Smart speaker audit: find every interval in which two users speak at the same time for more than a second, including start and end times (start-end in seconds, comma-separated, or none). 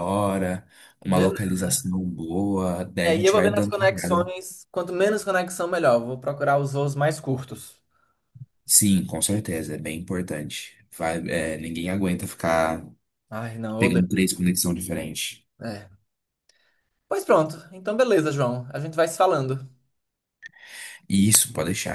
3.0-4.2